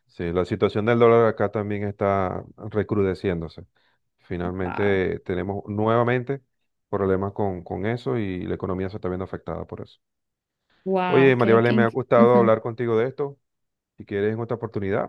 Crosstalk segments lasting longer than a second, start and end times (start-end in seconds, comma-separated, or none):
11.1-12.5